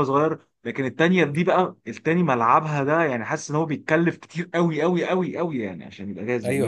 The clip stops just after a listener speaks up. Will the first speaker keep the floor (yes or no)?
no